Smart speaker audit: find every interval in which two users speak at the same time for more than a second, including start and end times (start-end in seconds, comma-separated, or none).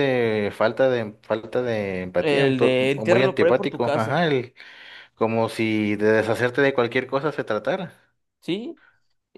2.2-4.2